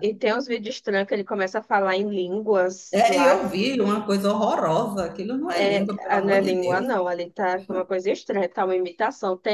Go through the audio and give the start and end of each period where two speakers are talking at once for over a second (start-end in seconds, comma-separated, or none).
5.5-6.9